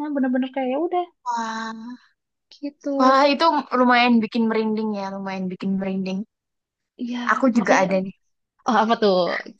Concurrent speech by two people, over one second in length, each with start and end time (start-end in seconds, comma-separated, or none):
none